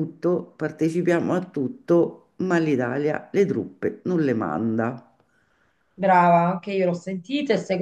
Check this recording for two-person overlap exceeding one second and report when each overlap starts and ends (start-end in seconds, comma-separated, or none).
none